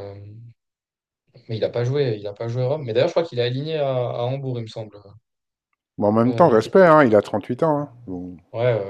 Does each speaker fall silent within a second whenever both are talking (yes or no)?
yes